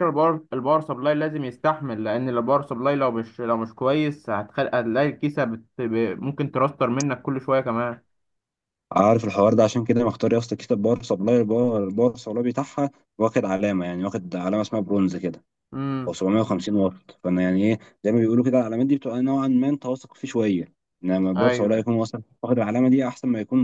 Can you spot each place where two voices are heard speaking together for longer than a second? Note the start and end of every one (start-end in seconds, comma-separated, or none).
none